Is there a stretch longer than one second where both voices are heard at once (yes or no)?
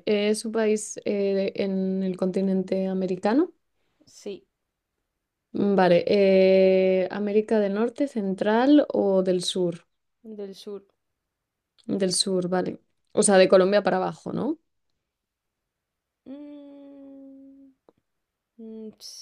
no